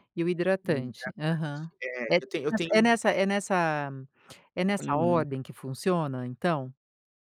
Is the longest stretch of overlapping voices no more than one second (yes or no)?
yes